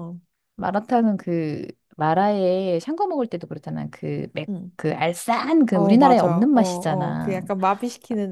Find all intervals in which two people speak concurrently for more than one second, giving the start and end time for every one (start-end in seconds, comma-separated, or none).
5.7-7.4